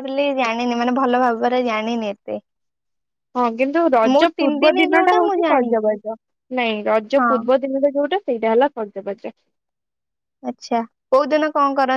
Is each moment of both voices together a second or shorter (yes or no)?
no